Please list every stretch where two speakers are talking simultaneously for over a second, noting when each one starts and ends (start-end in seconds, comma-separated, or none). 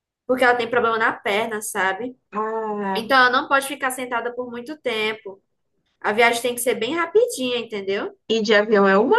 none